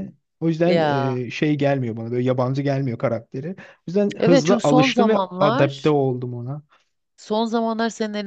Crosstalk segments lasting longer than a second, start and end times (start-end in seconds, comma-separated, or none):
4.2-5.9